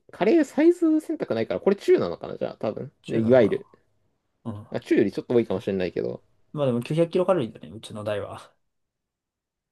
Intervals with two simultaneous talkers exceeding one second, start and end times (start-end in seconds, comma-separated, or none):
none